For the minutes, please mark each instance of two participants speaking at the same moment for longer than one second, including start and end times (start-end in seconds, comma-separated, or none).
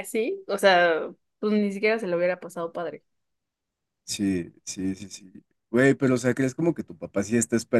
none